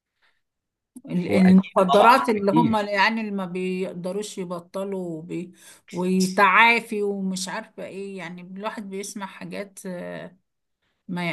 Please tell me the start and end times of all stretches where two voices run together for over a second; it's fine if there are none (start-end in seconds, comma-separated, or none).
1.3-2.8